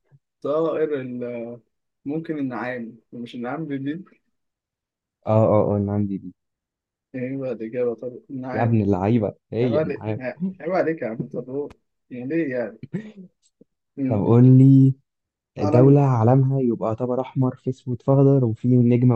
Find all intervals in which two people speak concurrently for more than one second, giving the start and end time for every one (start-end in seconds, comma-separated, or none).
none